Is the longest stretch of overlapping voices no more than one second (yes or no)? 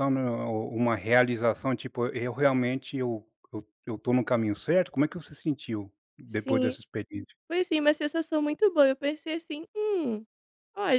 yes